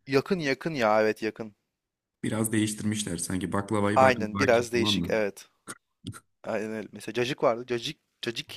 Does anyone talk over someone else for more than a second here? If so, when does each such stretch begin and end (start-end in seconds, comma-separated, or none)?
4.0-5.2